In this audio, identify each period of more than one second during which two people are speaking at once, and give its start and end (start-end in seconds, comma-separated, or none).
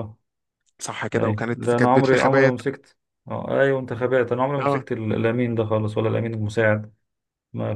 1.1-2.6